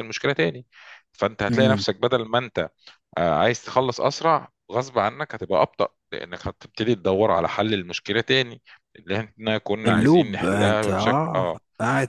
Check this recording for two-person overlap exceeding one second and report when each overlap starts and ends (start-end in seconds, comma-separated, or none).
9.9-11.6